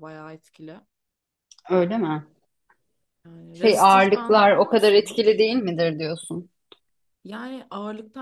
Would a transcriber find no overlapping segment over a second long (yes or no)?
no